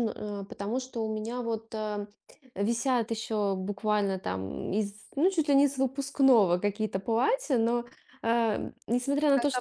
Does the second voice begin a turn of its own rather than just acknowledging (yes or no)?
no